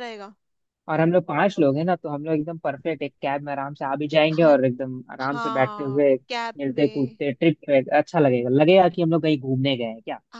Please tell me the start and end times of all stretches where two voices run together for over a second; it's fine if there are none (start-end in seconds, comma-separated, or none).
5.2-7.2